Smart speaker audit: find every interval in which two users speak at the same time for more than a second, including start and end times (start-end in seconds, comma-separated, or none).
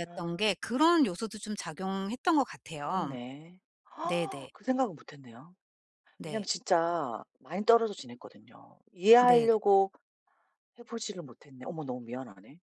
none